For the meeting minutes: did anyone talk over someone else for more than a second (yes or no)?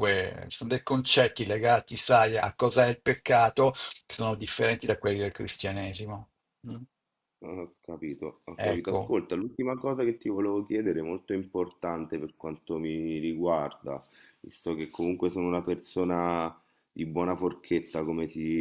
no